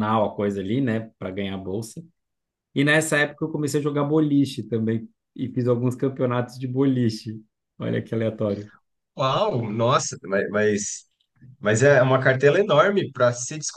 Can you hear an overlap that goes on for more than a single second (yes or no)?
no